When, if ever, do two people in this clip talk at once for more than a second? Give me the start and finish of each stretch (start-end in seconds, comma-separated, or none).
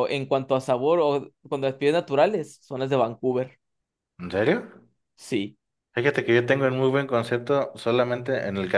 none